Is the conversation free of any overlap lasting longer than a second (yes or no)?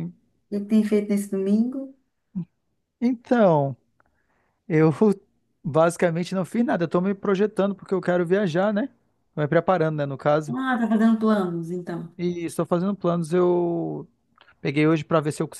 yes